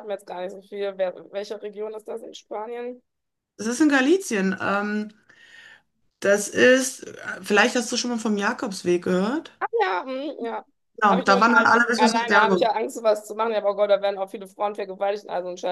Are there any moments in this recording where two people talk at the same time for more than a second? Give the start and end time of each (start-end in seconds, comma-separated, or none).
11.1-12.7